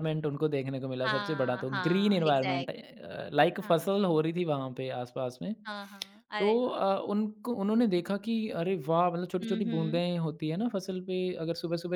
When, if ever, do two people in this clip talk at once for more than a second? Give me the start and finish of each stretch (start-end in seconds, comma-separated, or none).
1.0-2.9